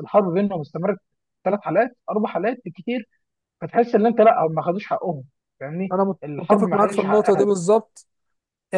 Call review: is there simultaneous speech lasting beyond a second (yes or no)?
yes